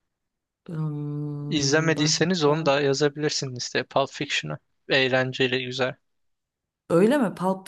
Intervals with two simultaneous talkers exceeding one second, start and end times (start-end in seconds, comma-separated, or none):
1.5-2.7